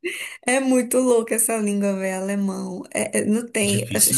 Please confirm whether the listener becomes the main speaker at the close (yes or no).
no